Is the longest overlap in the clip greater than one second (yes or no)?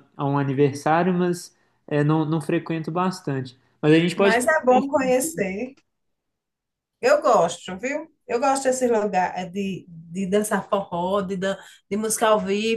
no